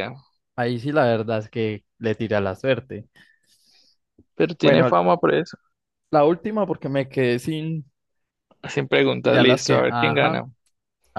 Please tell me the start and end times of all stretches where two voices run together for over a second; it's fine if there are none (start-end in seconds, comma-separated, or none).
9.2-10.4